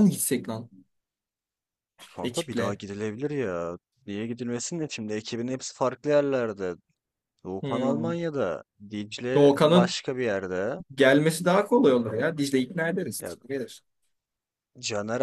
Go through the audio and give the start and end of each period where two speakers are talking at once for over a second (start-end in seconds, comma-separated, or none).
none